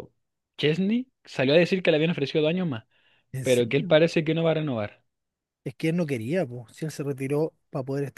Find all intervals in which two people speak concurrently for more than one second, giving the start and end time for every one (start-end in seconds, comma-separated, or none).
none